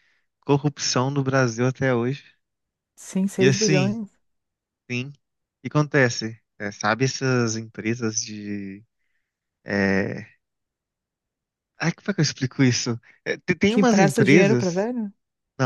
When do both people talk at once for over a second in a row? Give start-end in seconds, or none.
13.7-14.9